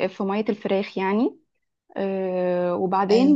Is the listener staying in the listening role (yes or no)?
yes